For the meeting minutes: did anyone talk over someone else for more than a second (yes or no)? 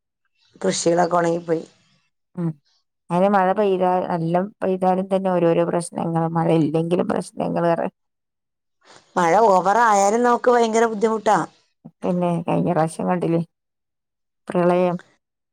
no